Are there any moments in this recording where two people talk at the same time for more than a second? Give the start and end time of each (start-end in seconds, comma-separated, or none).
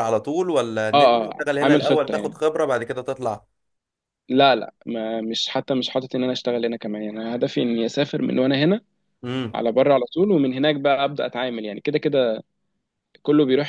0.9-2.4